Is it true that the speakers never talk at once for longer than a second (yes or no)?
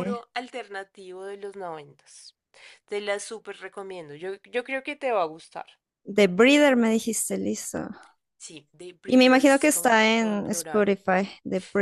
no